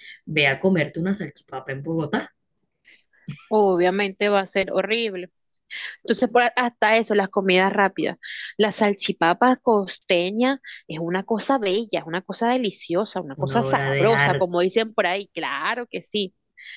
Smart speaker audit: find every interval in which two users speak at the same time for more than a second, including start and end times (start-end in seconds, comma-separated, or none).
13.4-14.7